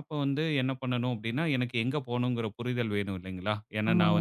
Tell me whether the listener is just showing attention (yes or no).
yes